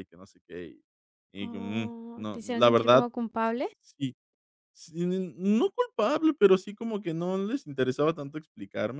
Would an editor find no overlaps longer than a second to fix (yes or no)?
no